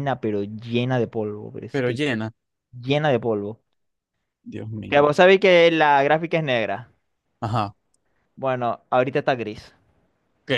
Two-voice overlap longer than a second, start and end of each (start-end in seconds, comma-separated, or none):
none